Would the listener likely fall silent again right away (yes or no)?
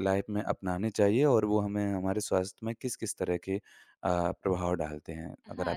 no